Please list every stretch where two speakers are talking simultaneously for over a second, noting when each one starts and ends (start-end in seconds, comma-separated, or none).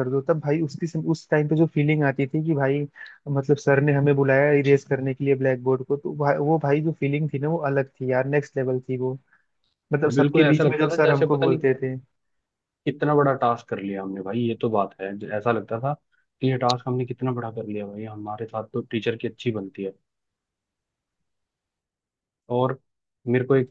10.1-11.6